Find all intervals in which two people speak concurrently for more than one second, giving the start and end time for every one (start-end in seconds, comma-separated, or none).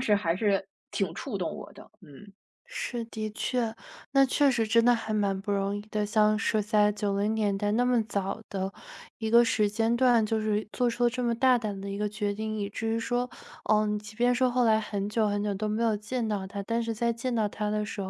none